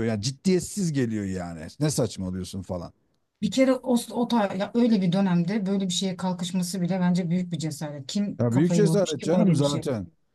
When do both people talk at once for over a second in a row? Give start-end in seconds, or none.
8.4-9.8